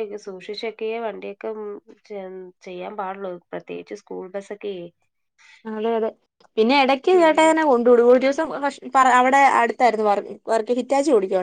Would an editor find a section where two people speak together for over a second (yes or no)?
no